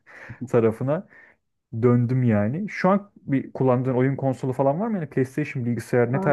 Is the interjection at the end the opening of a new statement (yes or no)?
yes